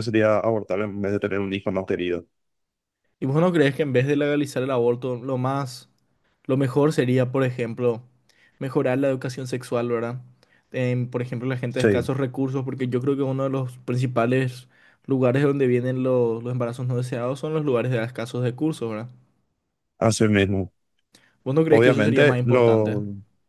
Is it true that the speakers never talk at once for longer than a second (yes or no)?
no